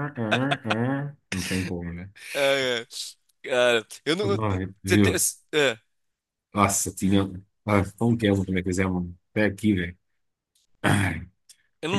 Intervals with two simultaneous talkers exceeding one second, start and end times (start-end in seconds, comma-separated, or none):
none